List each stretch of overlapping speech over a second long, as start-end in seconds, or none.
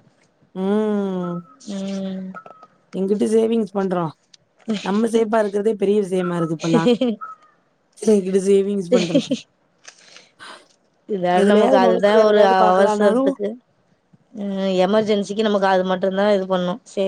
11.4-13.3